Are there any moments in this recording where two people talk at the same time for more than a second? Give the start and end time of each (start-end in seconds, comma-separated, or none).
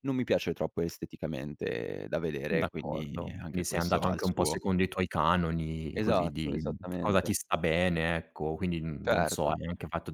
2.5-4.6, 5.9-7.3